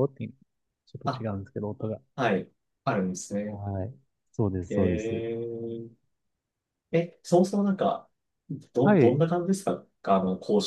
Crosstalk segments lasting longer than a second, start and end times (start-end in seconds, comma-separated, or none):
none